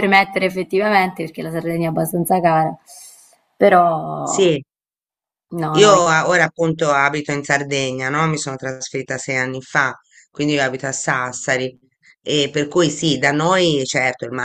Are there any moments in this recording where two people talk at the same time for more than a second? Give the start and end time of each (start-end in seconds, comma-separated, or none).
none